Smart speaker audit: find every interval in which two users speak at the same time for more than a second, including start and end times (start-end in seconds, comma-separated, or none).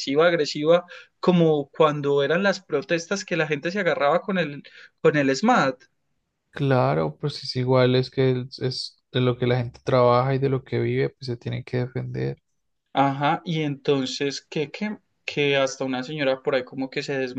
none